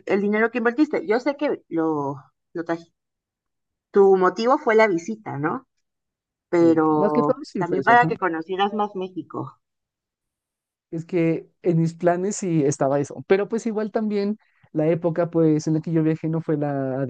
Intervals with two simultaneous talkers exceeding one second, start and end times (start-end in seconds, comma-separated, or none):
6.6-8.1